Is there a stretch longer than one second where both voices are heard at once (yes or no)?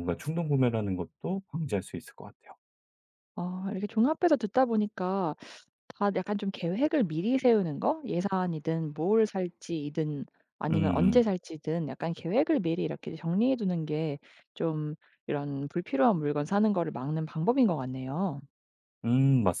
no